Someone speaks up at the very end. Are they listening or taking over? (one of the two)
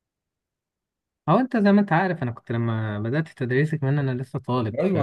taking over